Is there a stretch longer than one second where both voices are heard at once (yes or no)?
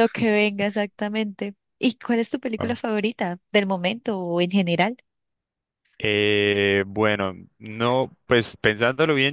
no